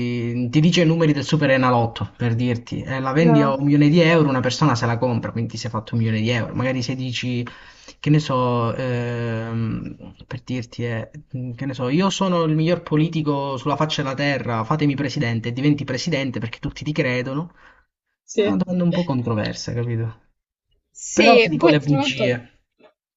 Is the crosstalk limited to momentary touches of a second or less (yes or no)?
no